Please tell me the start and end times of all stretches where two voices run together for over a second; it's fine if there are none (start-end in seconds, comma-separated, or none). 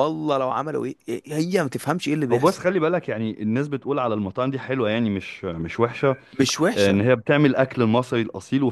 none